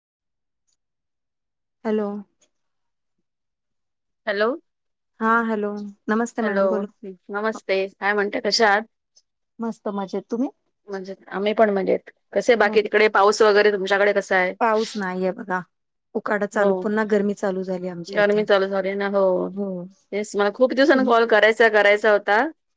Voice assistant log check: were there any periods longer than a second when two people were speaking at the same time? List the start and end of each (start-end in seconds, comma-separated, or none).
none